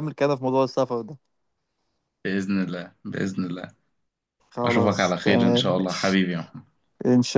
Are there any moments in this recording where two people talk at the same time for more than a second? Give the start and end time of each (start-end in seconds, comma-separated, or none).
4.6-6.2